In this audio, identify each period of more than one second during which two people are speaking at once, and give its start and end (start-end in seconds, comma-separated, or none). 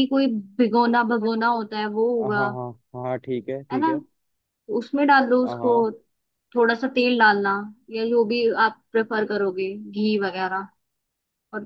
none